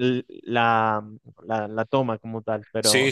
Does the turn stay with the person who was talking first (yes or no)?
no